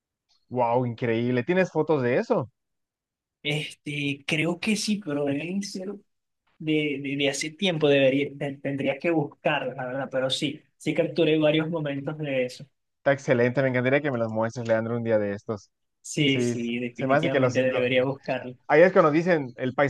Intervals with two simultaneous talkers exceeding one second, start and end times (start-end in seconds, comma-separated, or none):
16.3-17.8